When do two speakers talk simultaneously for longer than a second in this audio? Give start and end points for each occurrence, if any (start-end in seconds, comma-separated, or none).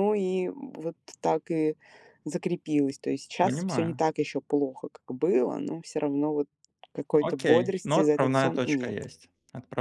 7.2-9.1